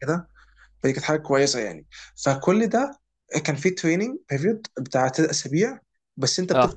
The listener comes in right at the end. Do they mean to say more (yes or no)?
no